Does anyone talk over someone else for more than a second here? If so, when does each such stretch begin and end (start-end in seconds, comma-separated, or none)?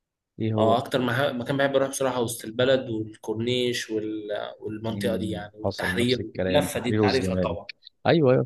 4.9-7.6